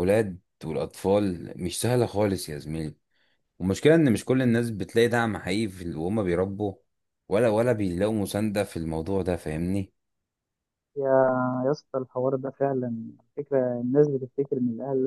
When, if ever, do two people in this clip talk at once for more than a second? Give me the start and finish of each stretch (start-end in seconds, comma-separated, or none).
none